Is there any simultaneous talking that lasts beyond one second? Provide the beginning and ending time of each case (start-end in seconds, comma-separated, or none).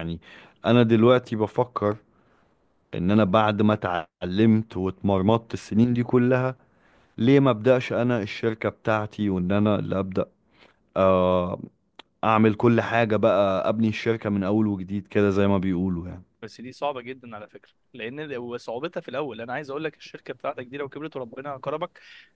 none